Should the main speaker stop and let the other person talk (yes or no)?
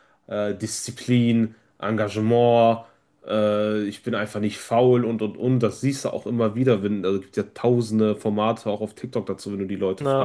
no